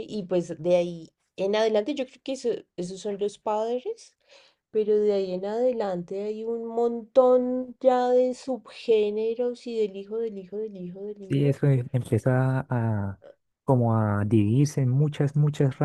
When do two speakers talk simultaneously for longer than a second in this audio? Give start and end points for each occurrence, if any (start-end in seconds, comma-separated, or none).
none